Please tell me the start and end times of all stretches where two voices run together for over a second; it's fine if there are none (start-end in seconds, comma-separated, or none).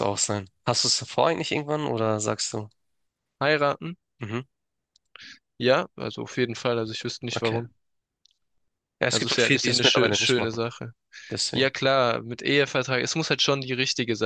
9.1-10.6